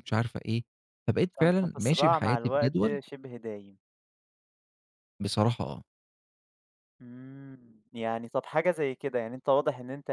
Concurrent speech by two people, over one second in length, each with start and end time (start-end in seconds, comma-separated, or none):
1.4-3.0